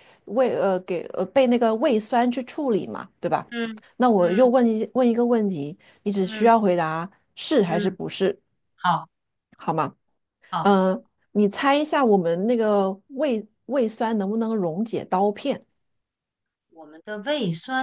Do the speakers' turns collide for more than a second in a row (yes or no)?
no